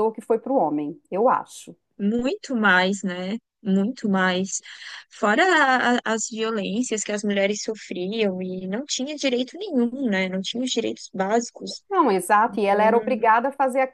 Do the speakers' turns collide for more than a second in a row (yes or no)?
no